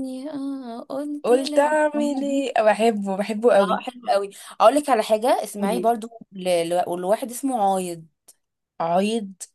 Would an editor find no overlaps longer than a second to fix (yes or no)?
no